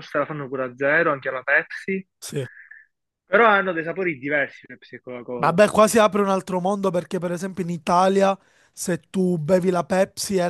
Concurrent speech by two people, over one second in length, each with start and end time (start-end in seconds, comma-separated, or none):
none